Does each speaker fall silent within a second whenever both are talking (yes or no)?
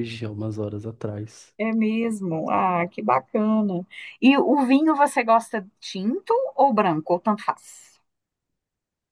yes